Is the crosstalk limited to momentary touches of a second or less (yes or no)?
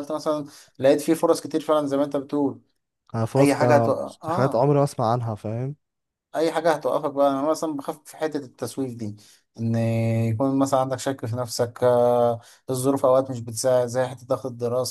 no